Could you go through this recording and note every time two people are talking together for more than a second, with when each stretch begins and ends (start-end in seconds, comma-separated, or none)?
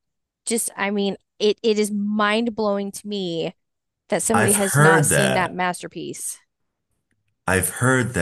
4.3-5.6